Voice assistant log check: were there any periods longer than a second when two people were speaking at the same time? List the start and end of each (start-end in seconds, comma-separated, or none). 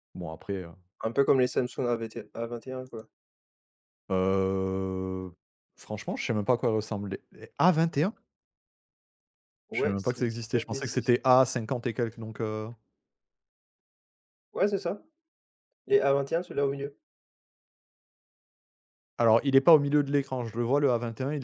9.7-11.1